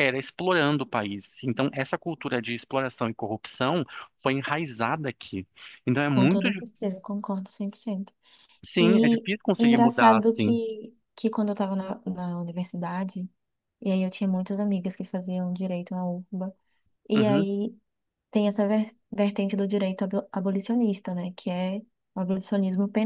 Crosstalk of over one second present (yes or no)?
yes